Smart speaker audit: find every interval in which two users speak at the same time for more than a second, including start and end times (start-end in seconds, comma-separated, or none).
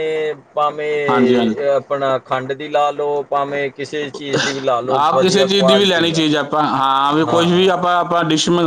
5.0-6.2